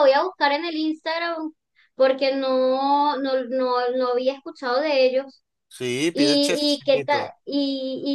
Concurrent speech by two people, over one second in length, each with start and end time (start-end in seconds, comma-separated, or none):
6.1-7.3